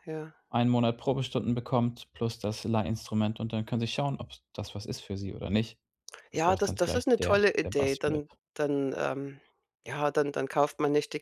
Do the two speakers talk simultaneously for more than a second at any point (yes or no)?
yes